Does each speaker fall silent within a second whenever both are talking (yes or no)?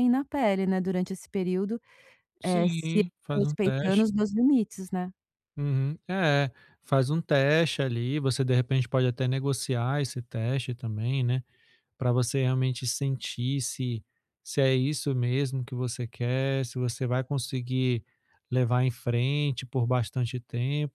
no